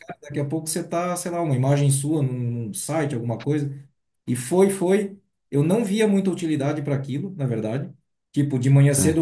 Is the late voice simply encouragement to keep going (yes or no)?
yes